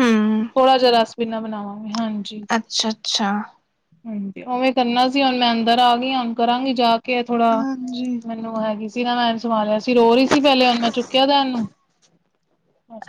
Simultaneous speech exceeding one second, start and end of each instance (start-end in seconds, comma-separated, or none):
none